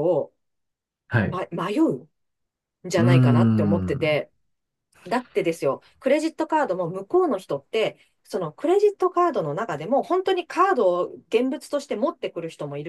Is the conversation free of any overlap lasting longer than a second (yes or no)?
no